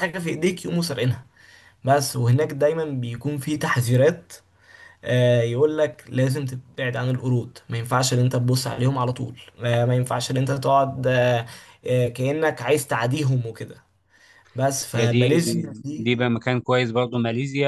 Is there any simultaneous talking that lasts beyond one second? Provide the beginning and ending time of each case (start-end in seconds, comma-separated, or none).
none